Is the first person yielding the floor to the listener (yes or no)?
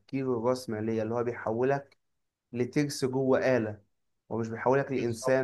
no